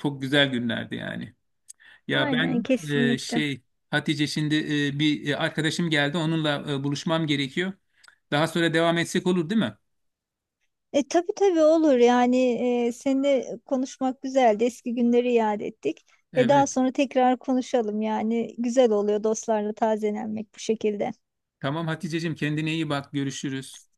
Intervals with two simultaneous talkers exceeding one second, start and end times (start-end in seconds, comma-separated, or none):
2.1-3.4